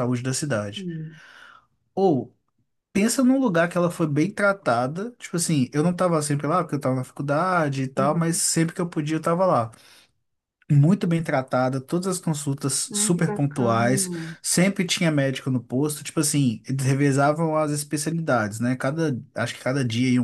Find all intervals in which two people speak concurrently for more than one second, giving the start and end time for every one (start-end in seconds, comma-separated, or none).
12.9-14.4